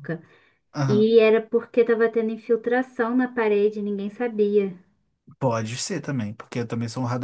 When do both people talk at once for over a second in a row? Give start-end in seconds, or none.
none